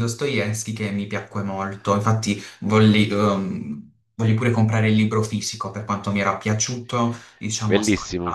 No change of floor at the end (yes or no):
no